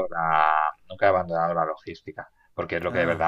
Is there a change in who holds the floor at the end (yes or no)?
no